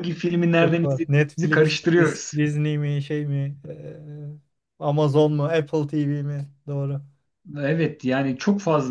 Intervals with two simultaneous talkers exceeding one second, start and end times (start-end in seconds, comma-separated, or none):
0.6-2.4